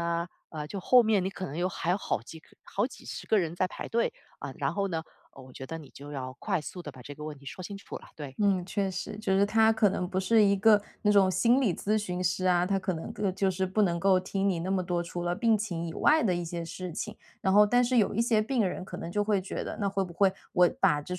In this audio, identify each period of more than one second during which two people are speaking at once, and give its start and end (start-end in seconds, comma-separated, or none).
none